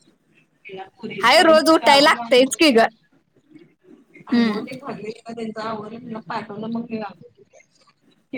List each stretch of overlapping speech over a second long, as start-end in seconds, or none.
1.2-2.8